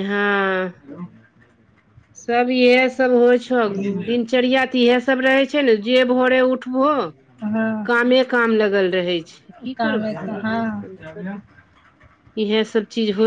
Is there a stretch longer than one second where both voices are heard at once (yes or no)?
yes